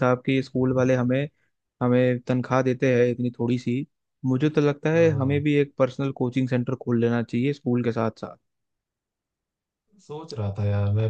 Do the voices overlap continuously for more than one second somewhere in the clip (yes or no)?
no